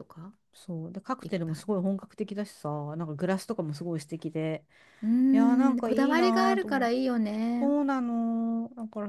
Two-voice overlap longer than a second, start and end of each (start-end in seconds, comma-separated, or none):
5.3-6.9